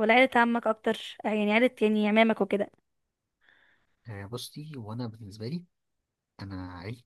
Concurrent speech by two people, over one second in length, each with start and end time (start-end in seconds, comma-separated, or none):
none